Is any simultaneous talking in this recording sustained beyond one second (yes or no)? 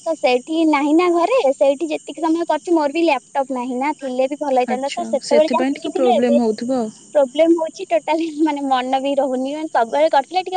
yes